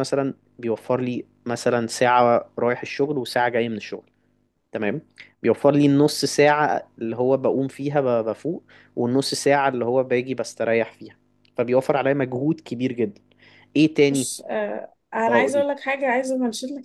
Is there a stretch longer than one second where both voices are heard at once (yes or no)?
no